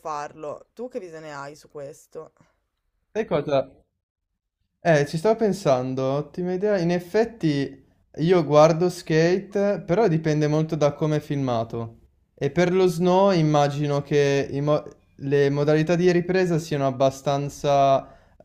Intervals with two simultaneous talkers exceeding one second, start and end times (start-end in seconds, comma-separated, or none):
none